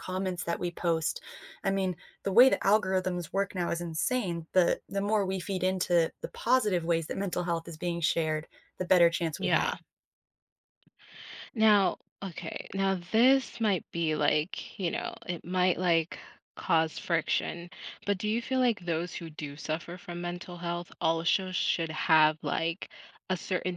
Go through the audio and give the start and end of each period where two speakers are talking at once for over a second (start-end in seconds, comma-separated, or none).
none